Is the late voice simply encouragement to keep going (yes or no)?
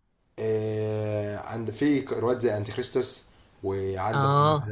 yes